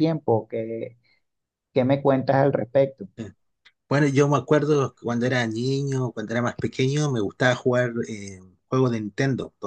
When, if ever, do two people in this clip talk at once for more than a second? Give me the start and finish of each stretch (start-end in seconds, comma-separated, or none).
none